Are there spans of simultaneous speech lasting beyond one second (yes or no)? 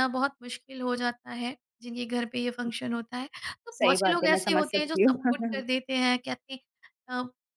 yes